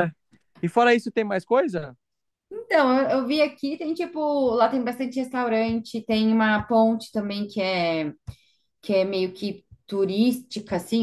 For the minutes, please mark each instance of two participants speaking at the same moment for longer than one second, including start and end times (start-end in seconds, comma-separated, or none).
none